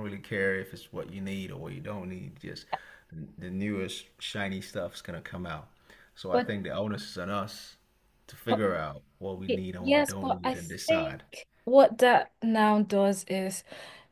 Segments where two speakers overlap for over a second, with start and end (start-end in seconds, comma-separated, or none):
9.5-11.2